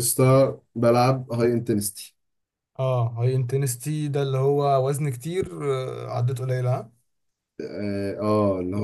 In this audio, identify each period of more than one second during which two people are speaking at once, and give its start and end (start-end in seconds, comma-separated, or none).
none